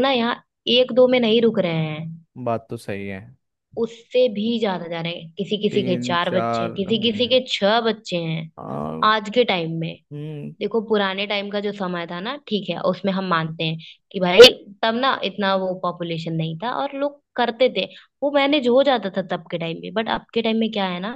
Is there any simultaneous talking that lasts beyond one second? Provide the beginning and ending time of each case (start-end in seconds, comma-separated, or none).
5.7-7.4